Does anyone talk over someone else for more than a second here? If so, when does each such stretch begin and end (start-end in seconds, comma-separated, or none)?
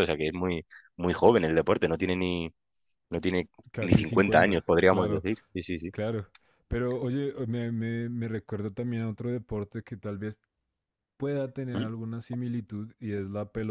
3.7-5.2